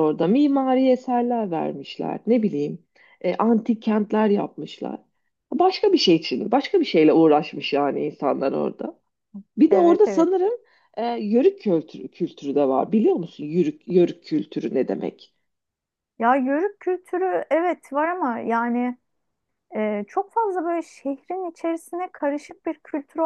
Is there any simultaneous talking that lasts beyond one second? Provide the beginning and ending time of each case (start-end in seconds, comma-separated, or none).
none